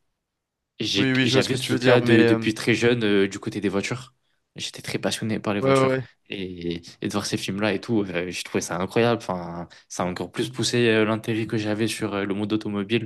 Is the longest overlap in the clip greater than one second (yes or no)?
yes